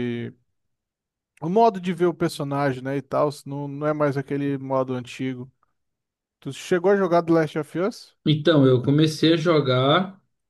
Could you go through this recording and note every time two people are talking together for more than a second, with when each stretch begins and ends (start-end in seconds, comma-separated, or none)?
none